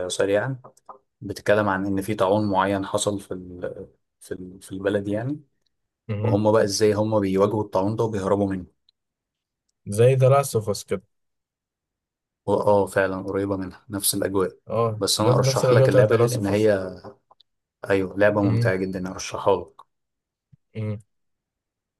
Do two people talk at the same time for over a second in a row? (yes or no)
yes